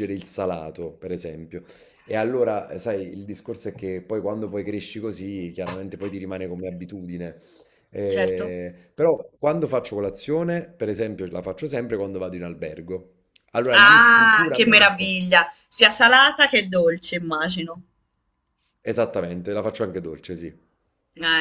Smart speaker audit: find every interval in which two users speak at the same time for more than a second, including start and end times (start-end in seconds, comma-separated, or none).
13.7-15.1